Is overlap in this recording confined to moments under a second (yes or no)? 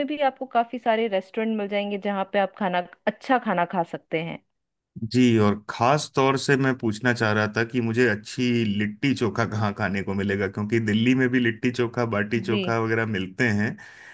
yes